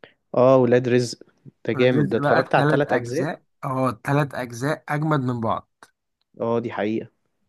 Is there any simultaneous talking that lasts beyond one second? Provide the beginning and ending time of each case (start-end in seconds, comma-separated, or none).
1.7-3.3